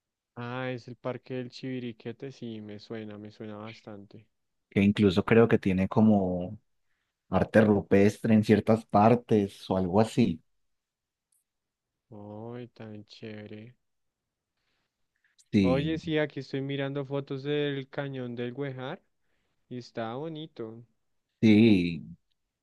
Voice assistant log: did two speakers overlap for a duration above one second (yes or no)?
no